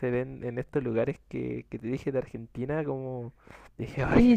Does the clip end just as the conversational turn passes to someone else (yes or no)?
yes